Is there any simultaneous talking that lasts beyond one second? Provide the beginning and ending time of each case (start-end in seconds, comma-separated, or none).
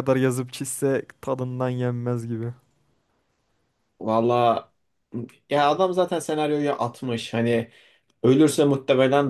none